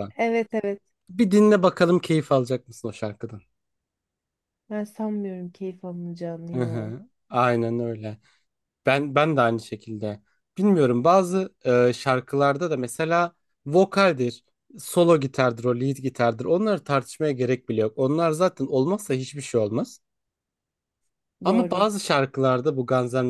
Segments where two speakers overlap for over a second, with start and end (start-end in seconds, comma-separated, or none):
none